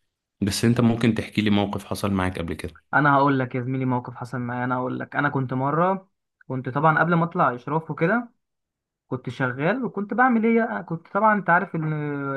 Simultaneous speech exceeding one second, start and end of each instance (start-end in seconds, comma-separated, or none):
none